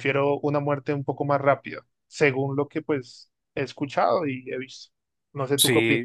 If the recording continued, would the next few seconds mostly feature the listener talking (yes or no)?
yes